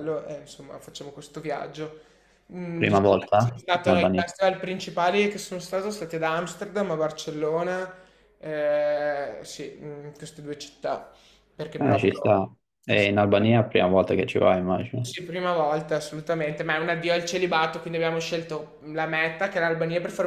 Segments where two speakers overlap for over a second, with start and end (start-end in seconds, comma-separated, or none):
2.8-4.2